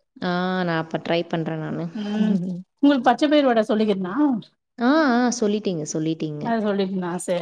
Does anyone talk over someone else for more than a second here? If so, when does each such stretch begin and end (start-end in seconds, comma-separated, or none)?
none